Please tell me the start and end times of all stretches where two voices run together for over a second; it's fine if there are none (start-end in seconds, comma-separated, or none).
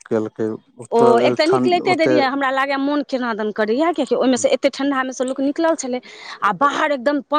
1.0-2.4